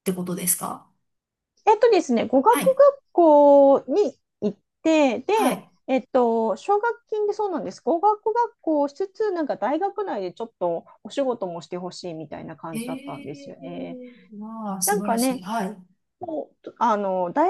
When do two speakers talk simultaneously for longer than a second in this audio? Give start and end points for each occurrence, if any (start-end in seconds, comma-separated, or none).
12.7-14.0